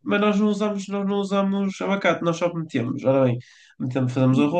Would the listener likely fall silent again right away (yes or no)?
yes